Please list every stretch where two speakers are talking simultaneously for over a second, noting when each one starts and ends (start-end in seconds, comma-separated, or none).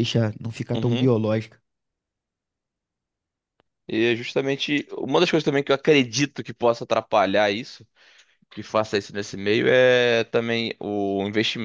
none